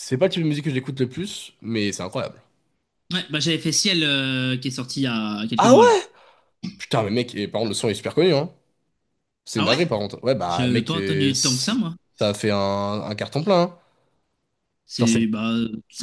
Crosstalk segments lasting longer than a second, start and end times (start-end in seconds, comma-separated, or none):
10.5-11.7